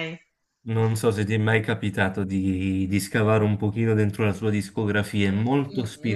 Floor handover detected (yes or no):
yes